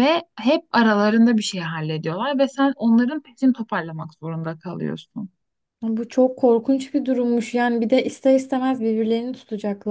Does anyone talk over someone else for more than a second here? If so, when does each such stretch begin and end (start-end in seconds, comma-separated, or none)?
none